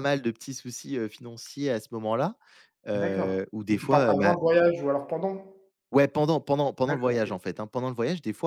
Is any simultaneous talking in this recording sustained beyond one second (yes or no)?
yes